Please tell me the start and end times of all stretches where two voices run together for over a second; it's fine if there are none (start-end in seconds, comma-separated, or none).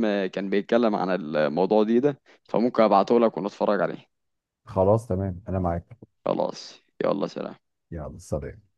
none